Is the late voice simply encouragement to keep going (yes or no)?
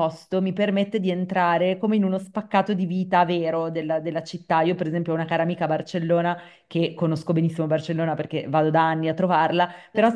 yes